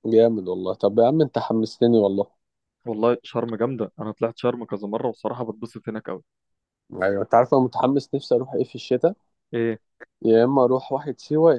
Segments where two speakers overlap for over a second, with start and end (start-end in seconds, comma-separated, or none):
none